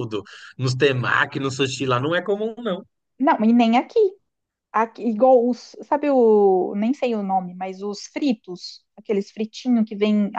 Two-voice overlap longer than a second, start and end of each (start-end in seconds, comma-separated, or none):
none